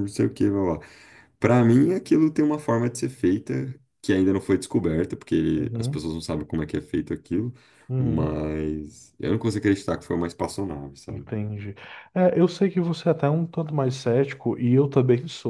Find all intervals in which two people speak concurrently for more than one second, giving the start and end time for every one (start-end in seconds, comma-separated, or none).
none